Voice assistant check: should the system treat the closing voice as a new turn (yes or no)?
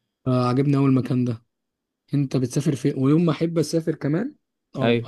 no